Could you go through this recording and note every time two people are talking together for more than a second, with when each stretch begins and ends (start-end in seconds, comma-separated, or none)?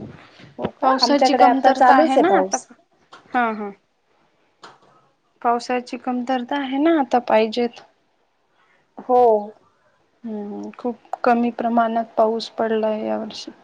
0.8-2.6